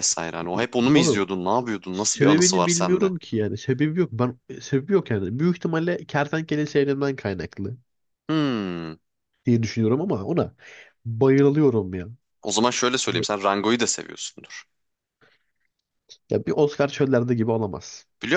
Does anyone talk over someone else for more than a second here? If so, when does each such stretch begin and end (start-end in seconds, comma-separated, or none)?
1.9-3.1